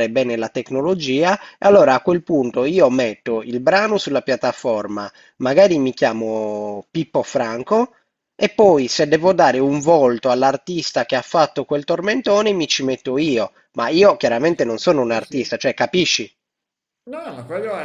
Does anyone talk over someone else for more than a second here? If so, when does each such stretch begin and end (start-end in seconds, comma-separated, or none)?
14.3-15.5